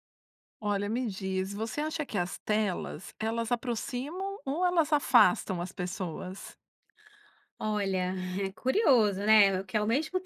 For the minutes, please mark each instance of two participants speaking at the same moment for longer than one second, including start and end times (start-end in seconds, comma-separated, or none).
none